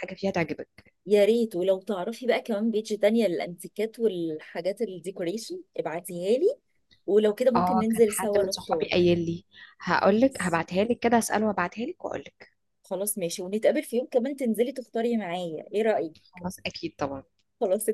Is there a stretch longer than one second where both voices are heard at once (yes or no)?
yes